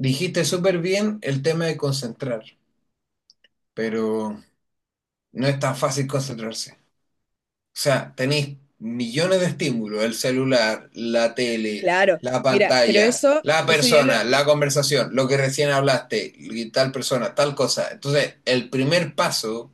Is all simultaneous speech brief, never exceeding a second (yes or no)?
no